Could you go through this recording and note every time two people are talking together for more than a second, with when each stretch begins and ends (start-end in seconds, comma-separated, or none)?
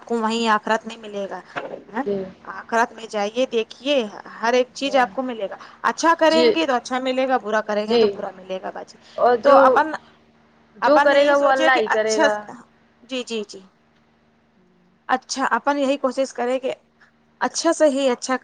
10.9-12.3